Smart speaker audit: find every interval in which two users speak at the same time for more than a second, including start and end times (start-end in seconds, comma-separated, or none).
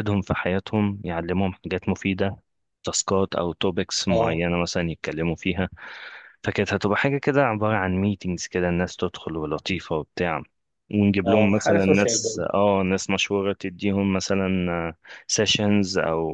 11.2-12.5